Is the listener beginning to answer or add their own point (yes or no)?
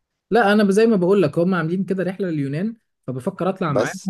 no